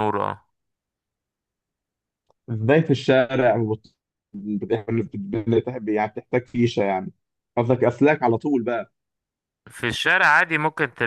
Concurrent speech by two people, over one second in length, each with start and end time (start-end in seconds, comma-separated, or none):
none